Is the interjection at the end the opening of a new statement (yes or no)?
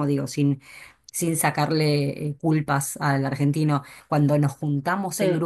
no